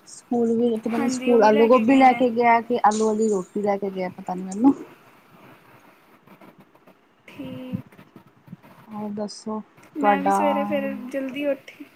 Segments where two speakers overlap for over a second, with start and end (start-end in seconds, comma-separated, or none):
1.0-2.2